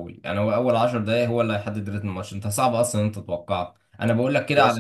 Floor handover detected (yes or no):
no